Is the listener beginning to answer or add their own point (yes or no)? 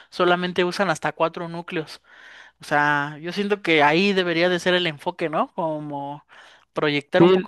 no